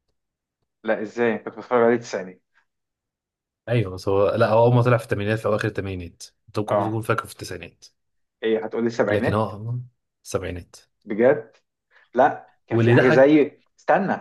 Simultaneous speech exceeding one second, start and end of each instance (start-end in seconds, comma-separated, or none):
none